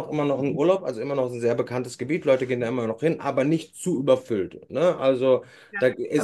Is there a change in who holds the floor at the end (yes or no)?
yes